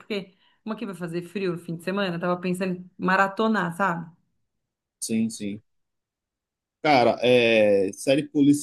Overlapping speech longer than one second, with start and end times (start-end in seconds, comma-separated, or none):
none